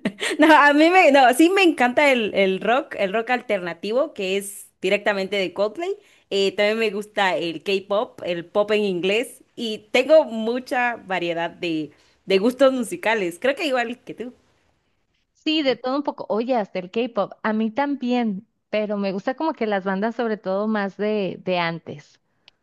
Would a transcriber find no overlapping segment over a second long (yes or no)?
yes